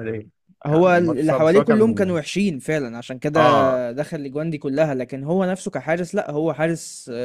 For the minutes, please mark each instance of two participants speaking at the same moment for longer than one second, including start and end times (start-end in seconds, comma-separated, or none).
0.7-2.1